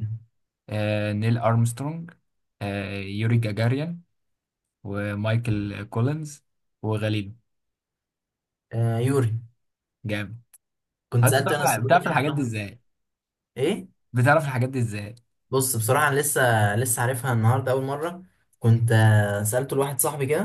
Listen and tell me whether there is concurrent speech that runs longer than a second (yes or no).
yes